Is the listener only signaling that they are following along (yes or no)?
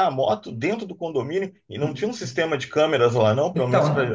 no